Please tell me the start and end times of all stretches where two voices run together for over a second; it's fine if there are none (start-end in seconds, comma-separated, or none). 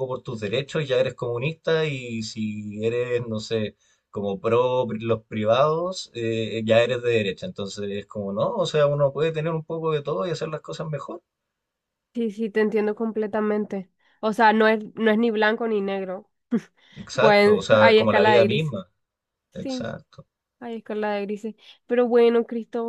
17.2-18.7